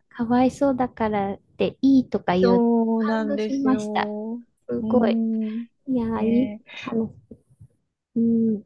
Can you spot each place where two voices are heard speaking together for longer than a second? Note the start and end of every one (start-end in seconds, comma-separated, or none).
2.4-4.1